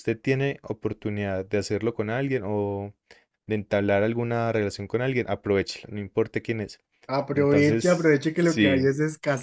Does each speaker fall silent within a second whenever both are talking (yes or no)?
no